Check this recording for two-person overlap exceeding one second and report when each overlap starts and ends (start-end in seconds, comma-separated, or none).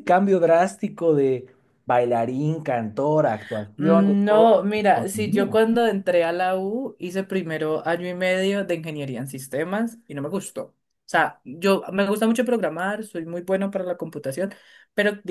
3.8-5.6